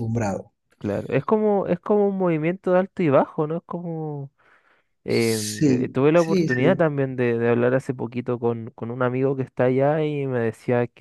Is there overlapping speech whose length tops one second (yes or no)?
yes